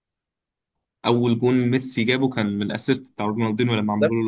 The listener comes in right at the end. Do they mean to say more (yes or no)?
yes